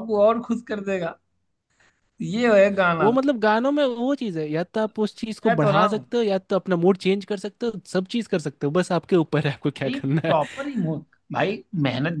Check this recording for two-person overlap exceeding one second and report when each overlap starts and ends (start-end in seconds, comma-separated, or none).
none